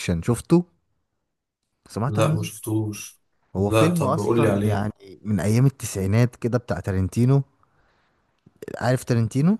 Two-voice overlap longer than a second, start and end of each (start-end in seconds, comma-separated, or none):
3.6-4.8